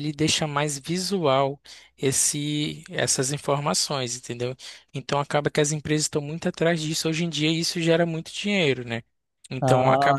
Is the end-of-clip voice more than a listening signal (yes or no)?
no